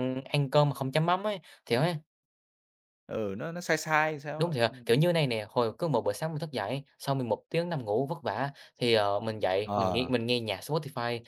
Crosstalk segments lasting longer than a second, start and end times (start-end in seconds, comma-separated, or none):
none